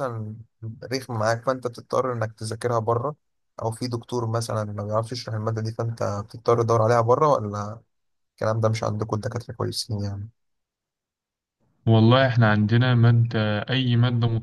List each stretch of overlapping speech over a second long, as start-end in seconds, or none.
none